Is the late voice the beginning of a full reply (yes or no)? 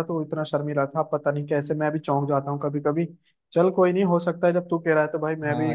yes